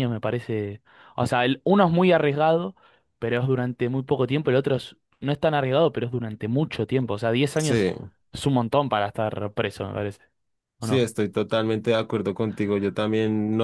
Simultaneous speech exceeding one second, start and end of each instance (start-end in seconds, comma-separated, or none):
none